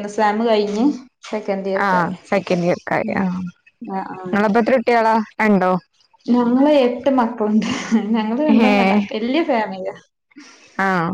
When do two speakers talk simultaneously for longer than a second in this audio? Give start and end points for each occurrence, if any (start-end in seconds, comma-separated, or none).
none